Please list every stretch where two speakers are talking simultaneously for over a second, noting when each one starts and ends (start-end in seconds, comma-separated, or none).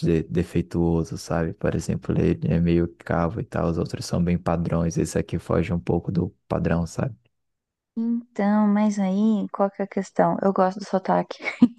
none